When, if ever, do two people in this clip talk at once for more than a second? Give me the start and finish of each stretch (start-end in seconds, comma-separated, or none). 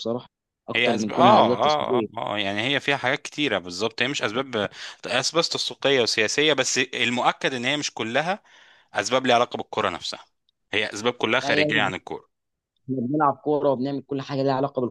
0.7-2.1